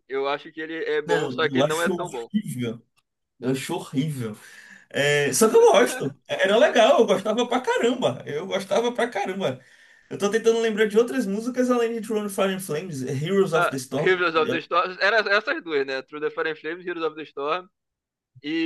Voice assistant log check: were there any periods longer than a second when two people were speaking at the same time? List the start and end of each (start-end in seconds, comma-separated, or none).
1.0-2.3